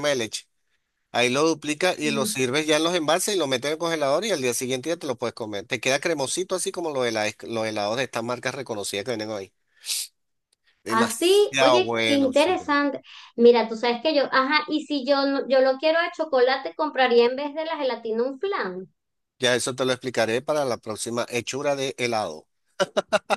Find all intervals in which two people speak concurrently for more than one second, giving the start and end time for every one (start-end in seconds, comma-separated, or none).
10.9-12.6